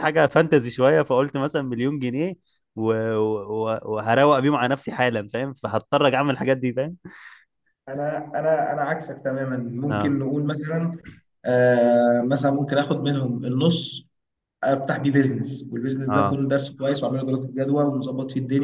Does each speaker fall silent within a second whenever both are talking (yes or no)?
yes